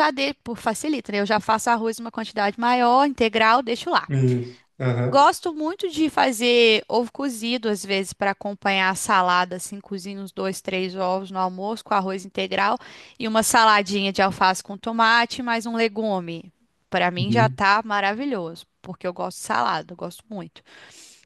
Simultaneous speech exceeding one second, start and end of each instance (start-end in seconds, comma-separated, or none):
none